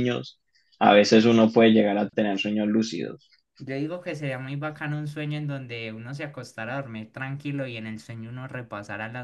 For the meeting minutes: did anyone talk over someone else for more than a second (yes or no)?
no